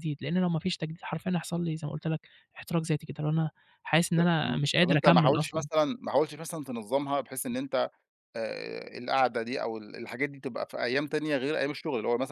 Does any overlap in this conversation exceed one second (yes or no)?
yes